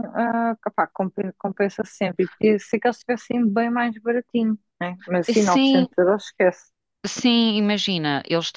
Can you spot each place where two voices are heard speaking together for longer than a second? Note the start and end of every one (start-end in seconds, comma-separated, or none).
none